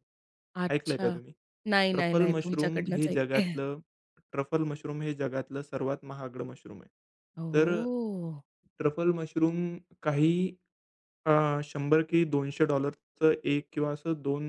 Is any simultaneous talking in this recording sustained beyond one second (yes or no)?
yes